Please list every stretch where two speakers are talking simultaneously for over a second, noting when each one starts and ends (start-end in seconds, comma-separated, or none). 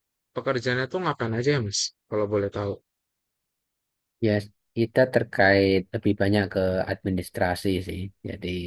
none